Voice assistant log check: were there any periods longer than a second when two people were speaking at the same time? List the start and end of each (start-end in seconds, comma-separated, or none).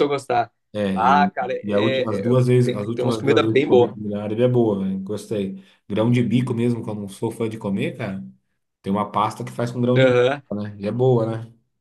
0.9-3.9